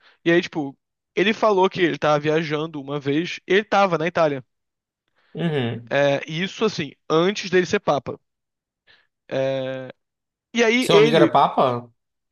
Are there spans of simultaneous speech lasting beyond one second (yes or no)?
no